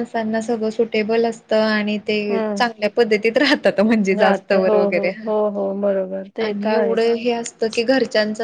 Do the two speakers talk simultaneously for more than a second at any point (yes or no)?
yes